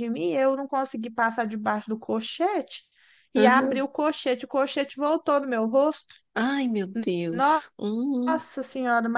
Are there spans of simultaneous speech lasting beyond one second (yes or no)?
no